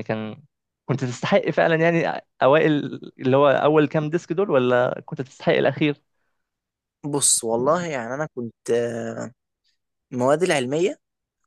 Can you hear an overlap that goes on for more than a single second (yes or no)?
no